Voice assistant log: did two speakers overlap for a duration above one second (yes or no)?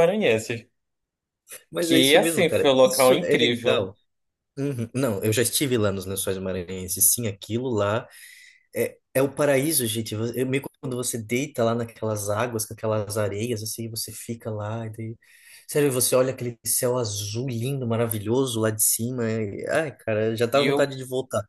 yes